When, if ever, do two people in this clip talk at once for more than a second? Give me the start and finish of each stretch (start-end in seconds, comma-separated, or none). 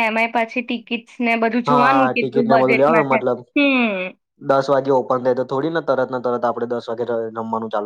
1.7-3.2